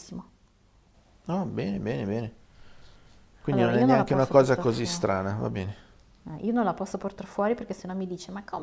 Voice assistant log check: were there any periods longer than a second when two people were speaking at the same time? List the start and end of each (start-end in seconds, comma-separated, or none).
3.5-5.0